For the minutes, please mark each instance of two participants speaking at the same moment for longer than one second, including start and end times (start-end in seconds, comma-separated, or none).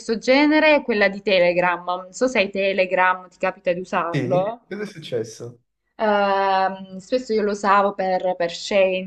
none